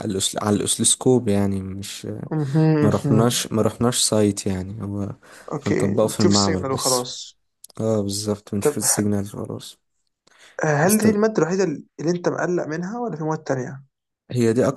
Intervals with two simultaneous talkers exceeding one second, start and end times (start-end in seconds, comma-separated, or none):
5.7-7.1